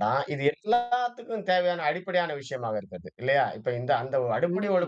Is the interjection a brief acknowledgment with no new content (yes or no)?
yes